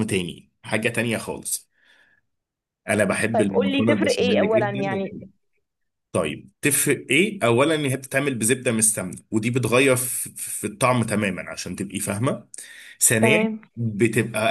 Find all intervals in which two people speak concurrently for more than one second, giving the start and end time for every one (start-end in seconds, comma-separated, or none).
3.3-5.0